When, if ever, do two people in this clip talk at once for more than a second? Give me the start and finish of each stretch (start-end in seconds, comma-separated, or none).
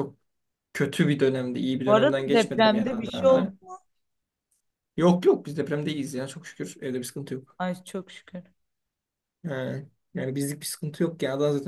1.9-3.5